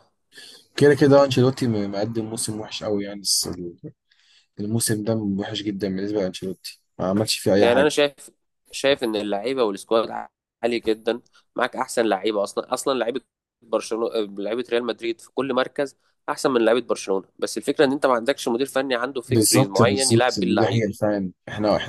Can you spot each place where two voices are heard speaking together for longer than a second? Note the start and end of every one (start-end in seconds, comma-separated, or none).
19.3-21.1